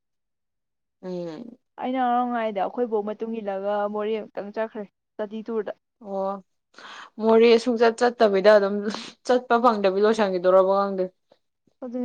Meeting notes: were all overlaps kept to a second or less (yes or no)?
yes